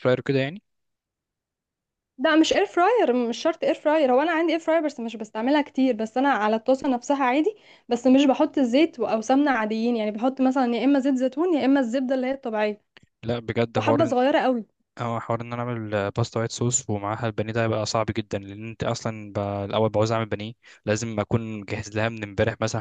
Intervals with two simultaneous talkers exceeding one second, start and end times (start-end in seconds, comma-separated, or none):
none